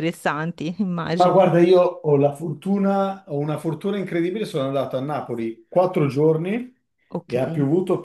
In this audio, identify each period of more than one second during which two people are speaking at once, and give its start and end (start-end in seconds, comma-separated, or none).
none